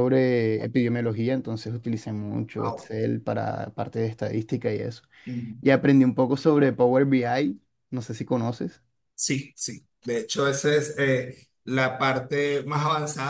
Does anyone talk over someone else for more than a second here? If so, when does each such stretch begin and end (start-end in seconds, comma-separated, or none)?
none